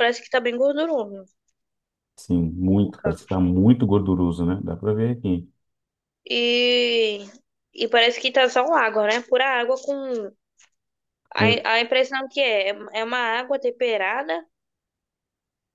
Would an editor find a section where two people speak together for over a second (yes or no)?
no